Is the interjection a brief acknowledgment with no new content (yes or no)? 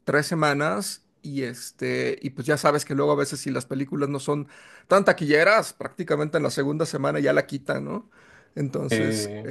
yes